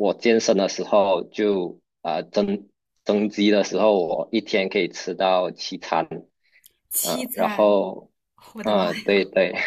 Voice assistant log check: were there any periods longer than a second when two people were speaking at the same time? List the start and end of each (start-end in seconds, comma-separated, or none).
none